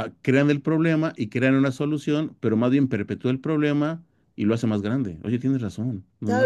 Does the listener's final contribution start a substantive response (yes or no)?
yes